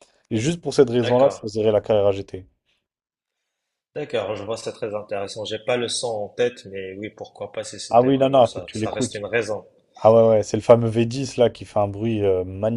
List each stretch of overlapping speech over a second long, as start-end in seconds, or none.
7.9-9.2